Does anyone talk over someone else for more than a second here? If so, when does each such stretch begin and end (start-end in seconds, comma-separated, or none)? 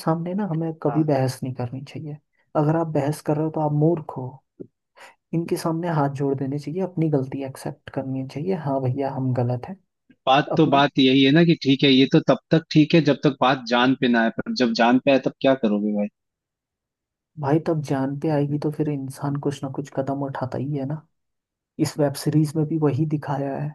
none